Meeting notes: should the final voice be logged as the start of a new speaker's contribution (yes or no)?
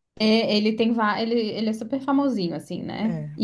no